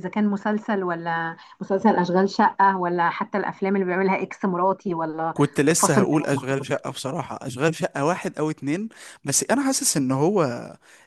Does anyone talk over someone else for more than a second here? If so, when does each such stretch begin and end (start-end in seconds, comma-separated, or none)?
5.8-7.1